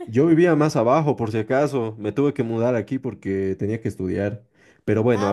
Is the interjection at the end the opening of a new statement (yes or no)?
yes